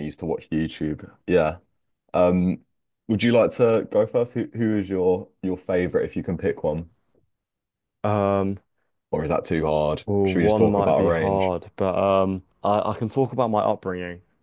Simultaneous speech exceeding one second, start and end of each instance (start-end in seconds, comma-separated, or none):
10.1-11.5